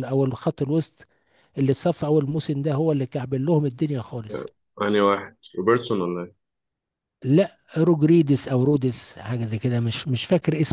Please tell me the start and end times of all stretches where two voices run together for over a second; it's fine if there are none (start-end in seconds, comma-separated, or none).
none